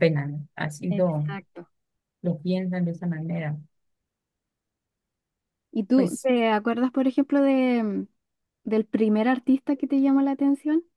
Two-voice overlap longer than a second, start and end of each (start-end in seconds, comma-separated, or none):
none